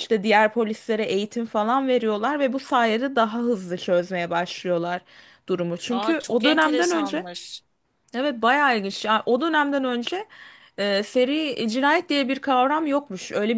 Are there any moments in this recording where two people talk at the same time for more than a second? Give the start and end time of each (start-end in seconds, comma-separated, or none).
5.9-7.2